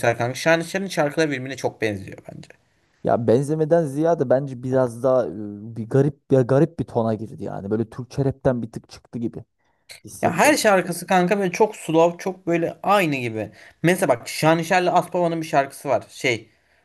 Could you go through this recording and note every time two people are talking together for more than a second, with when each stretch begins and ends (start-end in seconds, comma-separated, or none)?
none